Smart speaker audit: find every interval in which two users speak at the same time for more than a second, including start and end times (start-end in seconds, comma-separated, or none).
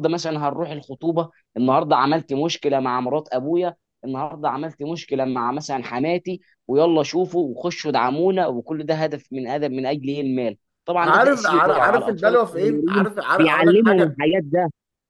11.0-14.2